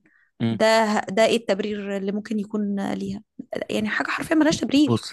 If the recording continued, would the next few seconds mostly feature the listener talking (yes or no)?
yes